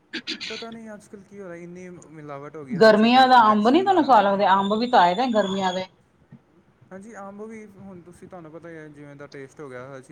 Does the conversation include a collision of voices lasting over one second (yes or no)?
yes